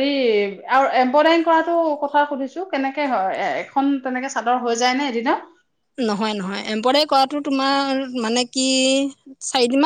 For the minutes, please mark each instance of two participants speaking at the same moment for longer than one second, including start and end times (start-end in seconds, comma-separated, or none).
none